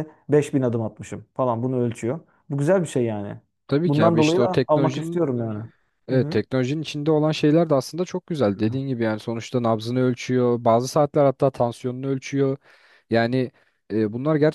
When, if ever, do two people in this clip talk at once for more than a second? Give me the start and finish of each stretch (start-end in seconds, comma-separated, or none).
3.9-5.2